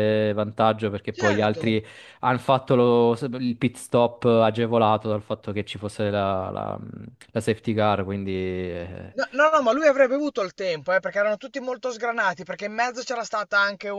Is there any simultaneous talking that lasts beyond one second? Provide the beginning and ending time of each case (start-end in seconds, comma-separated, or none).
none